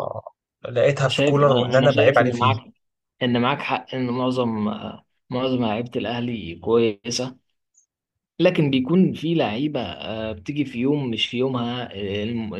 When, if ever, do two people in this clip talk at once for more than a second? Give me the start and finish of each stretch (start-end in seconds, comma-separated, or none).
1.1-2.5